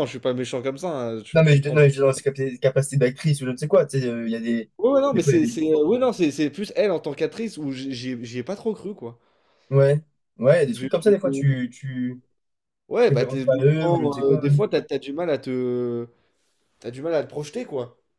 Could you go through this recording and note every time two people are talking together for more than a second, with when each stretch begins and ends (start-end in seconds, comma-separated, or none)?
13.0-14.4